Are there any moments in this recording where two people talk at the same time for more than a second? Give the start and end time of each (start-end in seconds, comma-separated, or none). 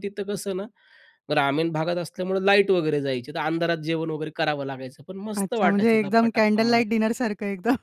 5.4-6.8